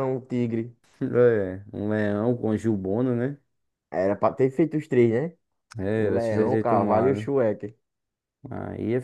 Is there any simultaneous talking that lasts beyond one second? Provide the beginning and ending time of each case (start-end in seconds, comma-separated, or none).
5.9-7.3